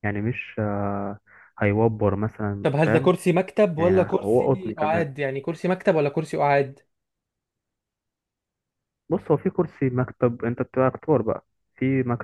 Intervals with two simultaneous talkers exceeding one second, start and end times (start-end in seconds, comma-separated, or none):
3.8-5.1